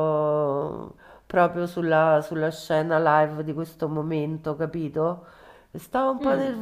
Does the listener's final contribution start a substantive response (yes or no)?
no